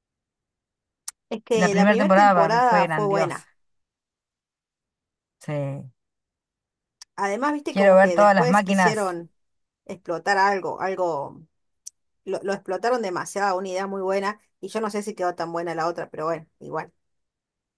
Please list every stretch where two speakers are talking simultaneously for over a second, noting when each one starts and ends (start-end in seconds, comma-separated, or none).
1.6-3.5, 7.7-9.1